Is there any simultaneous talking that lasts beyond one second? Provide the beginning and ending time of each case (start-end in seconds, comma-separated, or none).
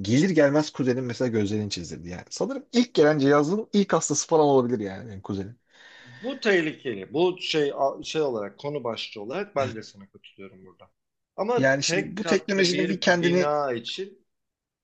11.6-13.5